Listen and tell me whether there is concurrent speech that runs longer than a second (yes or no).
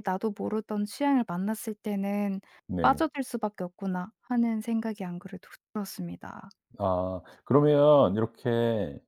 no